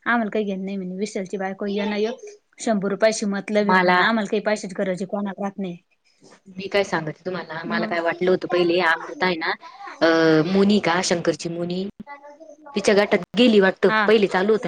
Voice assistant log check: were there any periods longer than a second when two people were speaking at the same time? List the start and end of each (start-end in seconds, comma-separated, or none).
none